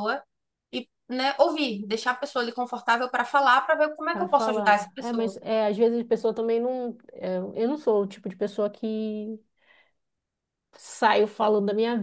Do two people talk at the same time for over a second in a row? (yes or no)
yes